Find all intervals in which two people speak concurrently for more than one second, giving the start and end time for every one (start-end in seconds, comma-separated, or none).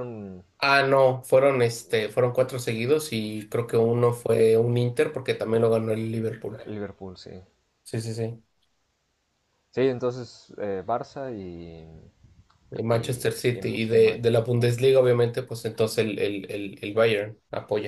12.9-14.4